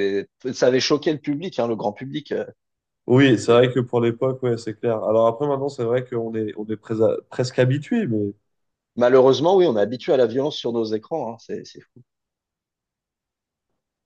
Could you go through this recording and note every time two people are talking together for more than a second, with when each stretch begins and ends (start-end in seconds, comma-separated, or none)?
none